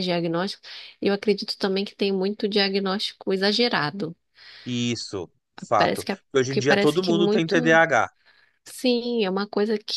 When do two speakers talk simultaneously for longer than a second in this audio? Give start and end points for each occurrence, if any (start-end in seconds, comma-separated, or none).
5.8-7.8